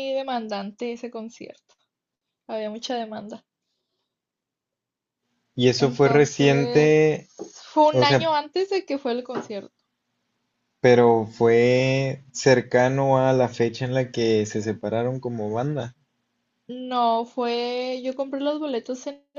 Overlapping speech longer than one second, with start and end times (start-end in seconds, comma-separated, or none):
5.8-7.1